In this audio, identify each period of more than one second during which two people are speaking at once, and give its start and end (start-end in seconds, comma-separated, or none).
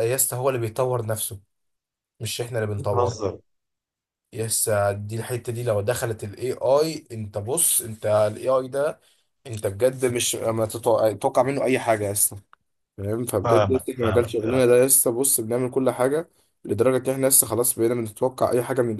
13.4-14.7